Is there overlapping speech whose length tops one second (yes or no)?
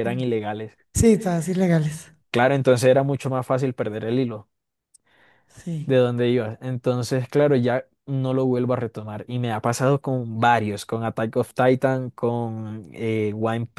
no